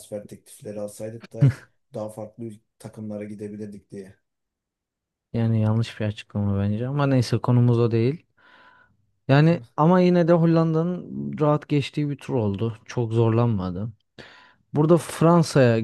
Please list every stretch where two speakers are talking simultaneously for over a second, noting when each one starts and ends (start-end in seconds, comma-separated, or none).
none